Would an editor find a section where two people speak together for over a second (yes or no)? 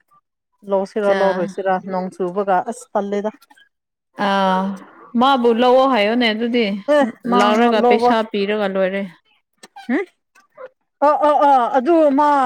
no